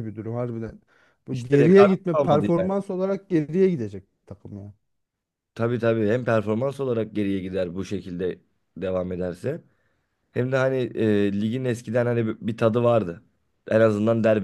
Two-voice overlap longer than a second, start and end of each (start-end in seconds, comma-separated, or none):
1.3-2.7